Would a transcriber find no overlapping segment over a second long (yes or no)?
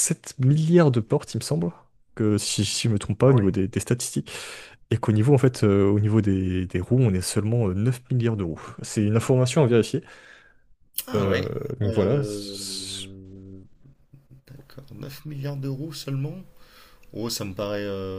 no